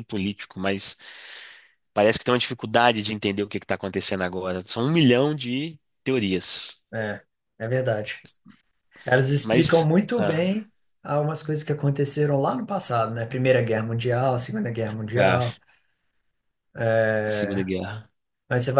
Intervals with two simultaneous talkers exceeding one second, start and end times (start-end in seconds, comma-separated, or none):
9.4-10.7